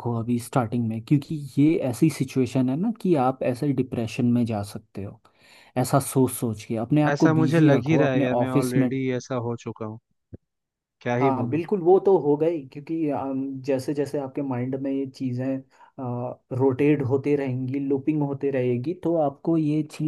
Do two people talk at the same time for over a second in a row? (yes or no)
yes